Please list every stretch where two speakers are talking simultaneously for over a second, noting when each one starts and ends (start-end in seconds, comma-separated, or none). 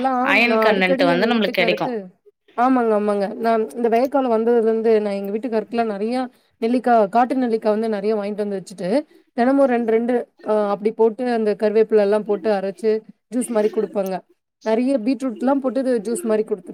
0.5-1.9